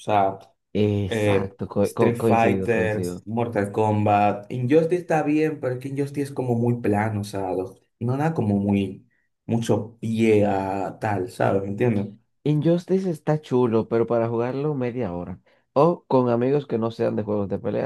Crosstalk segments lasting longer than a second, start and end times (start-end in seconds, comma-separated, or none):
1.1-3.1